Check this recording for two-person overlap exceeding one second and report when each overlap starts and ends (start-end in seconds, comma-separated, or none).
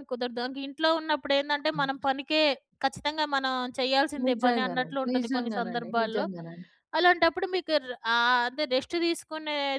4.2-6.2